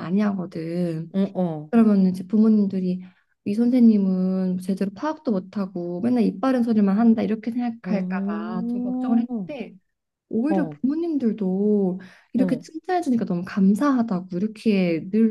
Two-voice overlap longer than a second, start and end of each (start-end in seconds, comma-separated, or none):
7.8-9.2